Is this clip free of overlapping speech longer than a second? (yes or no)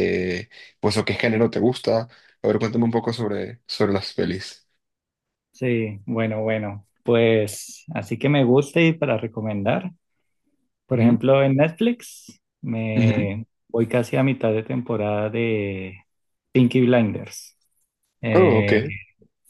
yes